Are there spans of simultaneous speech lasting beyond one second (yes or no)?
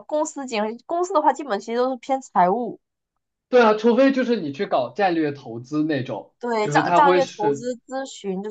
yes